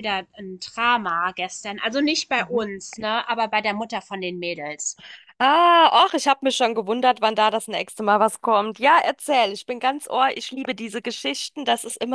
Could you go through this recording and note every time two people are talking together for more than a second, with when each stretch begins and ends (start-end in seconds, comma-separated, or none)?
none